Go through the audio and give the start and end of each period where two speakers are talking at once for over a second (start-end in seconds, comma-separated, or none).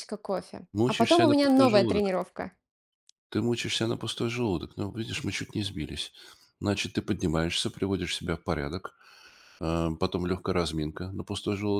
0.7-2.1